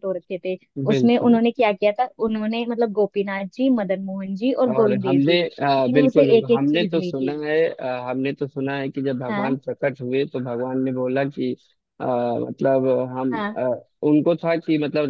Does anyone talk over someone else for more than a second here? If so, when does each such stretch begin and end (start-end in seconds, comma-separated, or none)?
4.7-7.3